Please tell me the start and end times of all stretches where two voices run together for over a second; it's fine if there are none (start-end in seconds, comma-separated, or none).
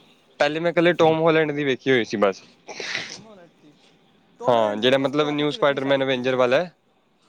4.5-6.4